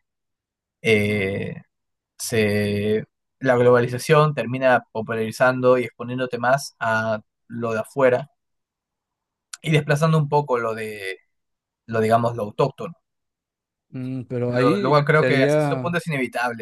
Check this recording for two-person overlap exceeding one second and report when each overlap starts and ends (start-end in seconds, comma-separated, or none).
14.5-16.0